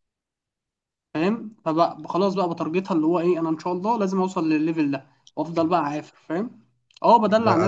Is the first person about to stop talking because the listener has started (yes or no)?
yes